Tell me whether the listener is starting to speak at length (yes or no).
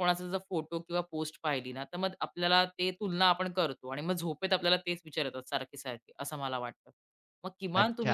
yes